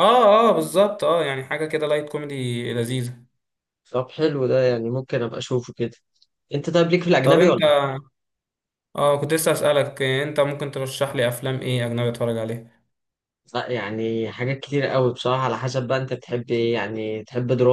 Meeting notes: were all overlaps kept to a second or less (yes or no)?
yes